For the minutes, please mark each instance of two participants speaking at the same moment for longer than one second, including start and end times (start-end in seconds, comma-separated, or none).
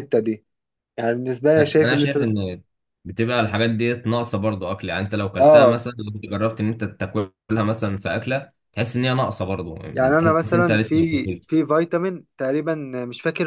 10.2-11.4